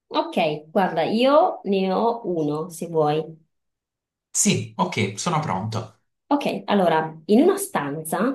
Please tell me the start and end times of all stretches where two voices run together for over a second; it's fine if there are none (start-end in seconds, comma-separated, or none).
none